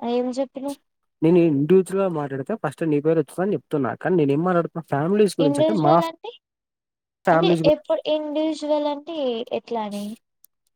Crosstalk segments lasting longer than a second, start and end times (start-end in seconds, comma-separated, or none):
none